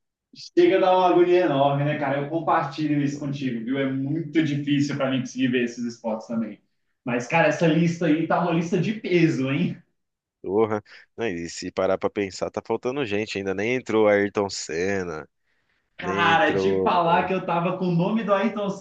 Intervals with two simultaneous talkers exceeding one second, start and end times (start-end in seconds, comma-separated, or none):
16.0-17.3